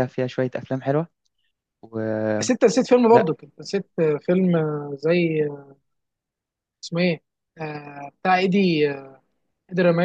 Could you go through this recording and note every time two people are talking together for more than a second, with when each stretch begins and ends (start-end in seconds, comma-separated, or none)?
none